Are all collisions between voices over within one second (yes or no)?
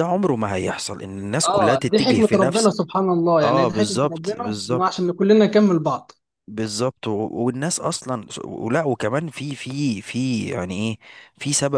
no